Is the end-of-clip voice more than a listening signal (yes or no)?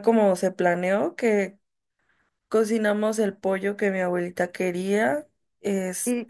yes